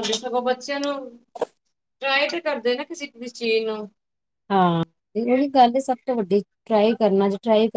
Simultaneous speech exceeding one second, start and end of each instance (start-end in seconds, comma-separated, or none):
none